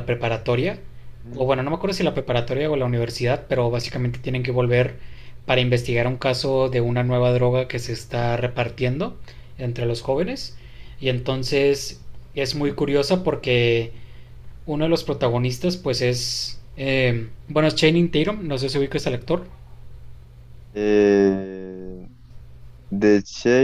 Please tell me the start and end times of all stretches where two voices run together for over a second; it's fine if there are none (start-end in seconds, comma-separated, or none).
none